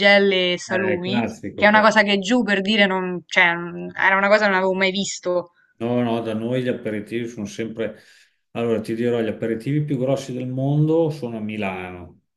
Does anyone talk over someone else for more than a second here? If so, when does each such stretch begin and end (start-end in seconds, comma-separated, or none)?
0.6-2.0